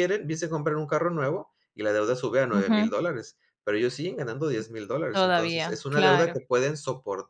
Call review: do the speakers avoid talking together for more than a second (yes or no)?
no